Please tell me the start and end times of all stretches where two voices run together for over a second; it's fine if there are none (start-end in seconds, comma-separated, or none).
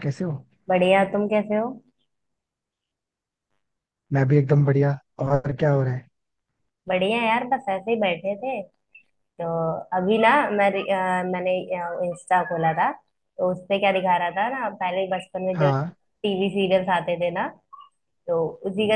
none